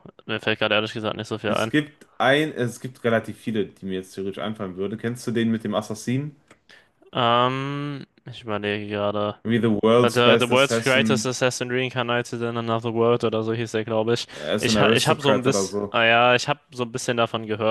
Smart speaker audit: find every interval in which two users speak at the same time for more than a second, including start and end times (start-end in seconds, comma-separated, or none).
10.0-11.3, 14.3-15.9